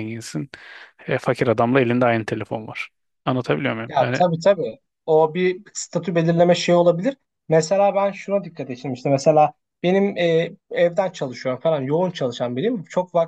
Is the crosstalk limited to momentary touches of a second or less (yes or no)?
yes